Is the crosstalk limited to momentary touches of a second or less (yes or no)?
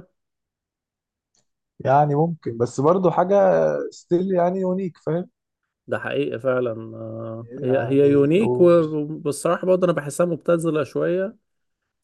no